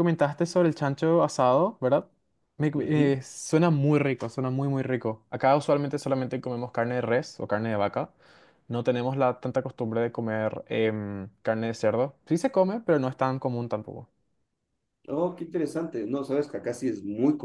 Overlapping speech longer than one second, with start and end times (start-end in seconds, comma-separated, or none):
none